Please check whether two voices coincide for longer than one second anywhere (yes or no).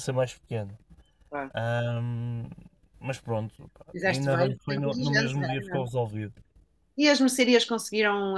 yes